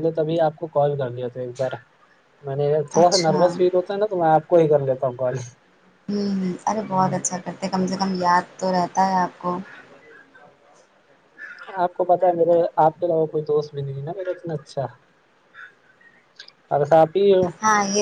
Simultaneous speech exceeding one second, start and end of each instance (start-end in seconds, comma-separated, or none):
none